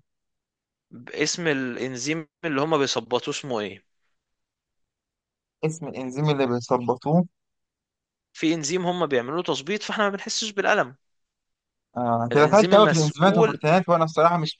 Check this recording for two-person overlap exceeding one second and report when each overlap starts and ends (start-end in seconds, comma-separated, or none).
12.3-13.6